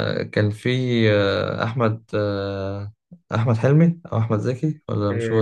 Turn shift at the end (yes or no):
yes